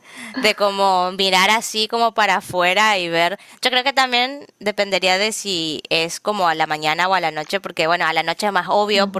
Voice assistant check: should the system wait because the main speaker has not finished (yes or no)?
yes